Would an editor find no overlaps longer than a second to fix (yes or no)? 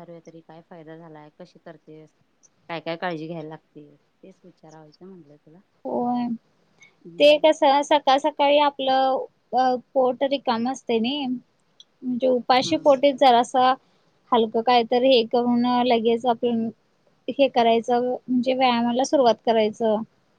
yes